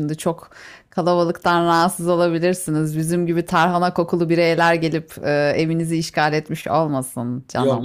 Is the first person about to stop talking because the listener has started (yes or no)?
yes